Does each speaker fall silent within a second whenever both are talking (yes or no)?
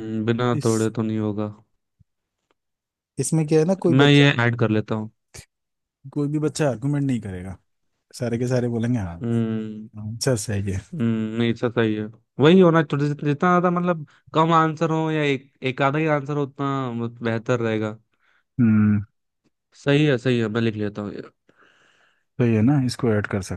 yes